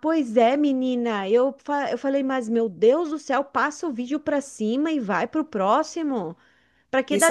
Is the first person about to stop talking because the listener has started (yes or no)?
yes